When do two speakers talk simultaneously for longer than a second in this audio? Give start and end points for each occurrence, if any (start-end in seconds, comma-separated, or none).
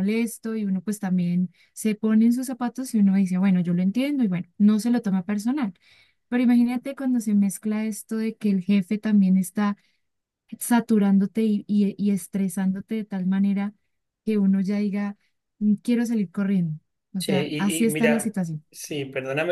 17.2-18.6